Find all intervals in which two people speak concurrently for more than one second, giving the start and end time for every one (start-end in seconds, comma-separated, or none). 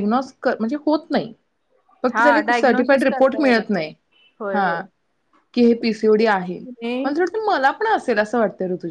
2.1-3.9